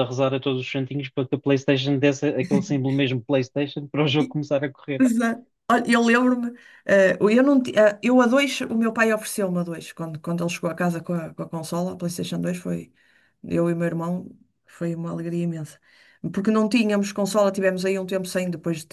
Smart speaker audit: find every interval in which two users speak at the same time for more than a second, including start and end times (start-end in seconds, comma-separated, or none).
none